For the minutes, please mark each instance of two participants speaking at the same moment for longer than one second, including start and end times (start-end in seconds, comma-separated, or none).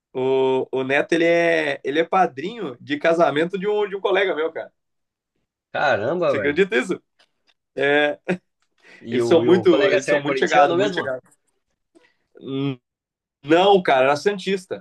9.1-11.0